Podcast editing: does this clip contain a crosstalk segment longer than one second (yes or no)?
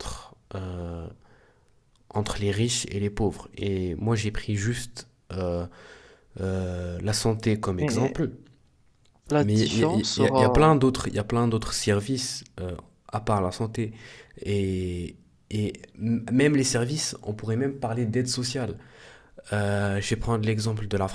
yes